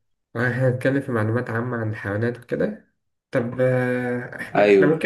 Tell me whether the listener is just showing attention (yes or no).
yes